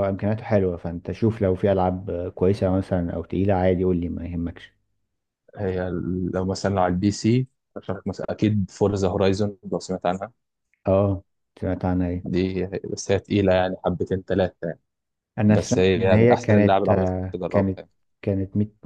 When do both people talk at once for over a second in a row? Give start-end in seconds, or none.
15.5-17.8